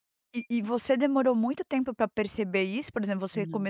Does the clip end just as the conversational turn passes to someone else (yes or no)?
no